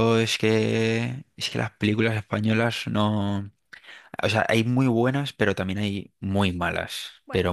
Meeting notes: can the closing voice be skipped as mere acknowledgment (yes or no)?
yes